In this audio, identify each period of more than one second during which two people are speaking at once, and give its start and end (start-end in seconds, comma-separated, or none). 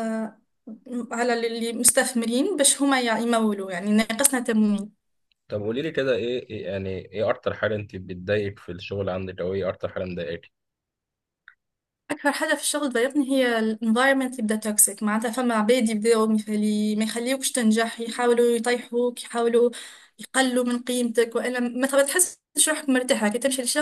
none